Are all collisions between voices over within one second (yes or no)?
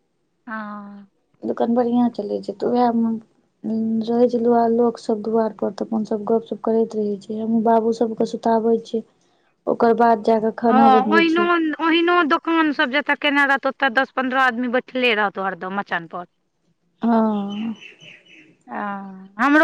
yes